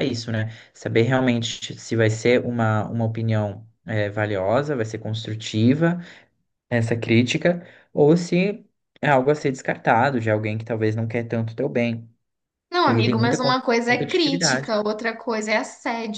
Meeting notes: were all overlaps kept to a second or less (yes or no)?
no